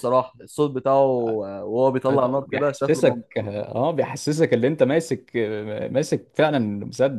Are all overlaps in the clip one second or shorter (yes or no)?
no